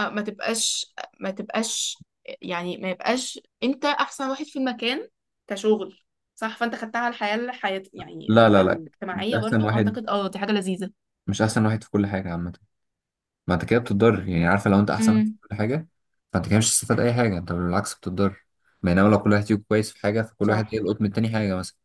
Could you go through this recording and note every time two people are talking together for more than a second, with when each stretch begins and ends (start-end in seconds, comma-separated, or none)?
8.3-10.0